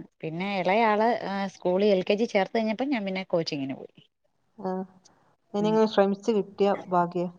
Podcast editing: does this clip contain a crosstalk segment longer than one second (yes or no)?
no